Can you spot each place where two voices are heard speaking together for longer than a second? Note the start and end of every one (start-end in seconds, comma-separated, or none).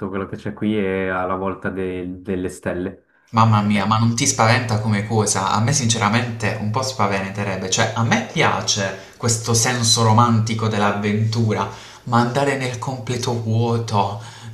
none